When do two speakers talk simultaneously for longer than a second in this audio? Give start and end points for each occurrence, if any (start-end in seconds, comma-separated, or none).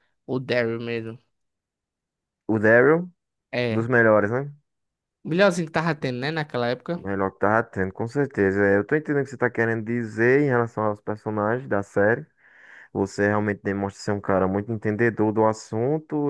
none